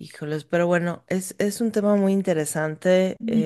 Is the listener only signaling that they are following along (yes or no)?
yes